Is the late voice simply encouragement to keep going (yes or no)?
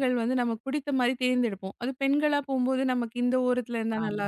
yes